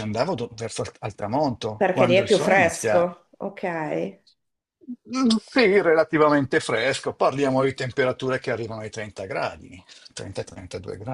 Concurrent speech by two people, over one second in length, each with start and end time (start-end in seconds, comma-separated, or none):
1.8-3.1